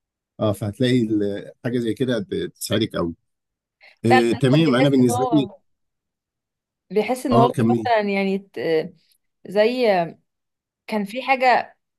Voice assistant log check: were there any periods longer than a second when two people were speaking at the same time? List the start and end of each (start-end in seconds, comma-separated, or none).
4.0-5.5